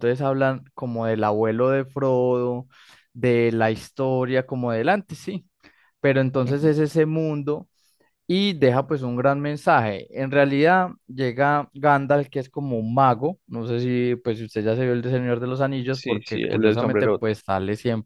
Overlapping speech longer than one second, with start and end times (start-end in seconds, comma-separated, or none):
15.9-17.4